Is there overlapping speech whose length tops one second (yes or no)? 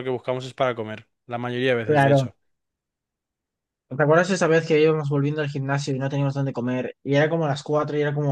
no